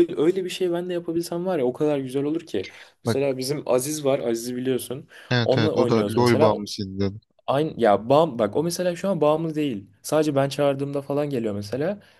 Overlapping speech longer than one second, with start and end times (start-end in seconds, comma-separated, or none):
5.4-6.7